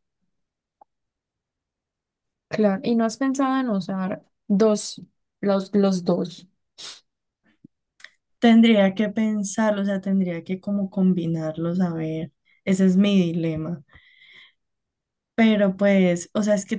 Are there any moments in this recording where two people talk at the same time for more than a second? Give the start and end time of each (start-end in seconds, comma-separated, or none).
none